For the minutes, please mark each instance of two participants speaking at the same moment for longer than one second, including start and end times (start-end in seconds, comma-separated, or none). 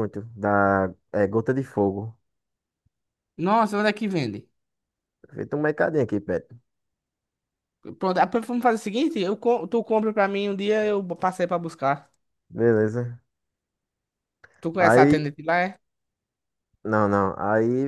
none